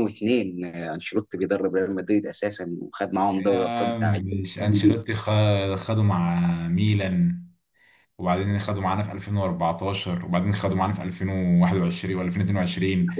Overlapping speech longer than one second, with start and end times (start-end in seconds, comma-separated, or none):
3.3-5.0